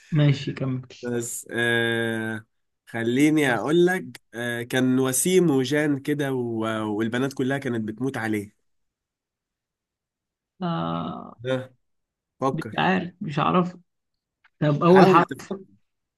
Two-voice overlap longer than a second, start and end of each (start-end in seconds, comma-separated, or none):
none